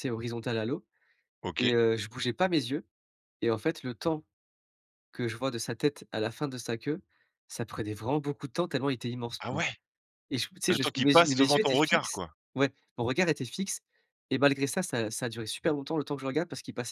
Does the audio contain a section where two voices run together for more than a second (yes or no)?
yes